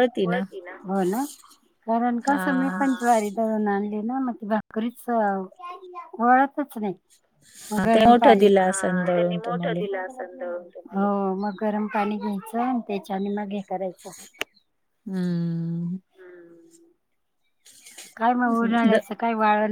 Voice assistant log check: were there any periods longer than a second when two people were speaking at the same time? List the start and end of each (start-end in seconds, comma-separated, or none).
7.9-9.8